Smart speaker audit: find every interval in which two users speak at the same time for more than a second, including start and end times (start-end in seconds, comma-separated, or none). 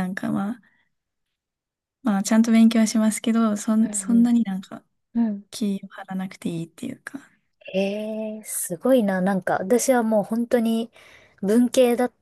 none